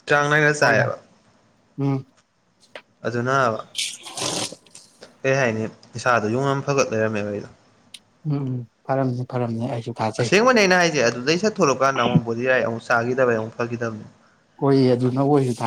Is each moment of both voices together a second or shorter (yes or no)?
yes